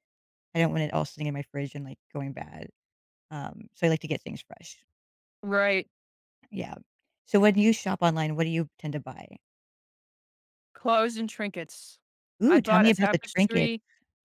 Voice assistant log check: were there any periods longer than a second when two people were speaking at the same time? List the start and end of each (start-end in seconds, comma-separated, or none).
12.5-13.7